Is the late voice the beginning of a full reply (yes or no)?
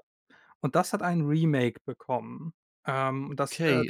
yes